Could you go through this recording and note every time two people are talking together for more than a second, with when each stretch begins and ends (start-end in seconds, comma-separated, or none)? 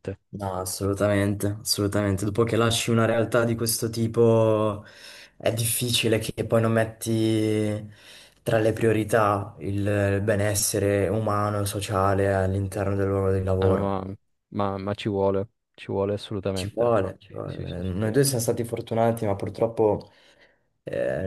16.5-18.2